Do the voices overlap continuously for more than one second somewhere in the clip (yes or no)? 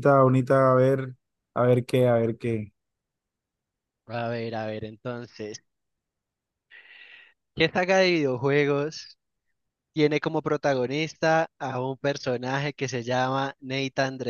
no